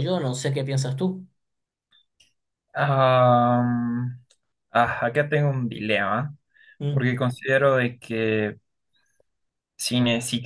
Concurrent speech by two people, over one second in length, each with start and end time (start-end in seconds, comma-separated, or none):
none